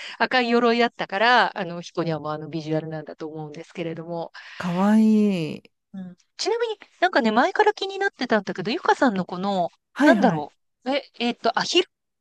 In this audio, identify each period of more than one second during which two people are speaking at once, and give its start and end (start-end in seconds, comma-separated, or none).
none